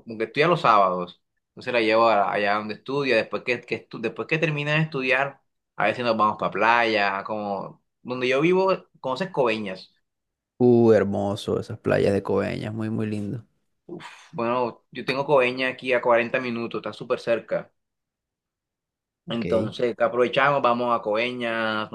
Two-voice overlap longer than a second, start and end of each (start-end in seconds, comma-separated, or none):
none